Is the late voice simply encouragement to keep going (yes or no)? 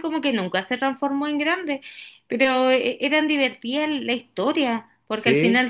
yes